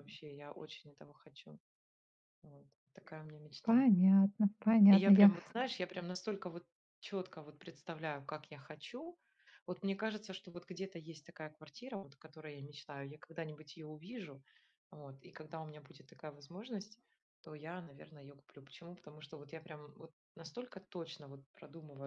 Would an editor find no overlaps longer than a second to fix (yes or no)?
yes